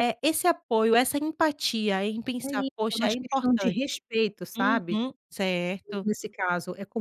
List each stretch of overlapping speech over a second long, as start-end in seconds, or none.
2.4-3.8